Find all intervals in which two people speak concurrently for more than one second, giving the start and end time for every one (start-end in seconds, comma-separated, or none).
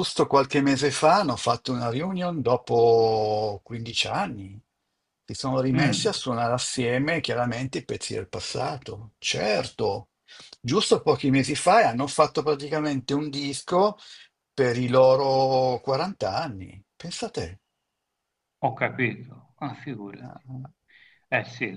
none